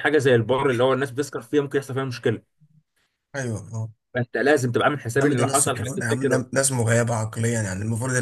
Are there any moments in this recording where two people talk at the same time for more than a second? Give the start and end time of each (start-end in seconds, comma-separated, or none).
5.2-6.4